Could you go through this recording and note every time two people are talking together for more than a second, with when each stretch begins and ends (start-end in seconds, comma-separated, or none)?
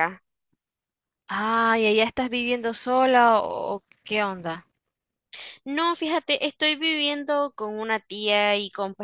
none